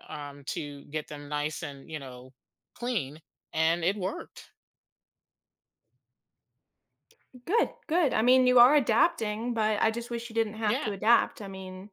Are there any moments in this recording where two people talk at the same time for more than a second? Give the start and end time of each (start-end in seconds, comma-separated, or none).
none